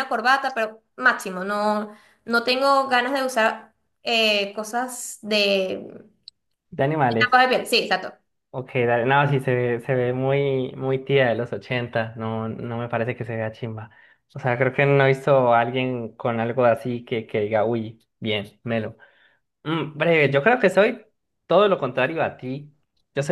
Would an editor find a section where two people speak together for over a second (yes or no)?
no